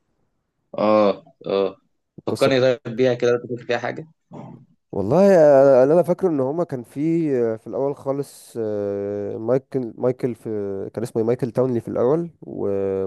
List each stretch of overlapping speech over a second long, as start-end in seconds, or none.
none